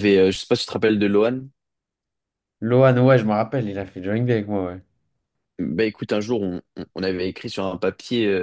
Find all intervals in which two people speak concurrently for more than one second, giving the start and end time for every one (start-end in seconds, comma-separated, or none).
none